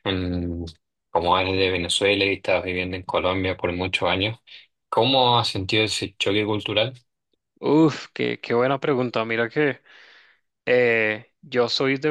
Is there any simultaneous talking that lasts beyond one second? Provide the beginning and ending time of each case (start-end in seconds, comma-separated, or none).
none